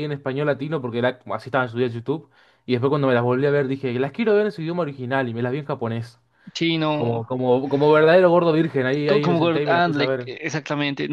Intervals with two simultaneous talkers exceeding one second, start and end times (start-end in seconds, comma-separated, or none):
9.1-10.3